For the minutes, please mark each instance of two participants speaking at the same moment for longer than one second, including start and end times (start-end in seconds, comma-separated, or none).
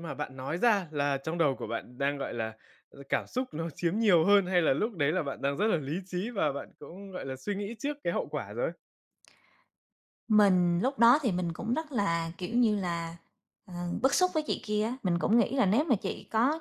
none